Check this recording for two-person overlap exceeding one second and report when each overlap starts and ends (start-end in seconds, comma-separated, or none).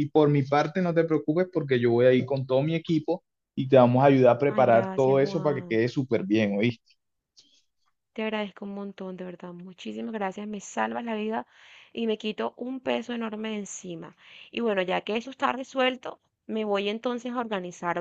4.5-5.8